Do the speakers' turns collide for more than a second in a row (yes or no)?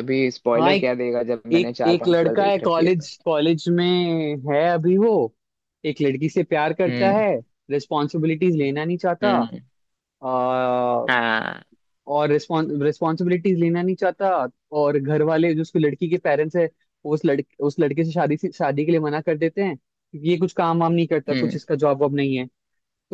yes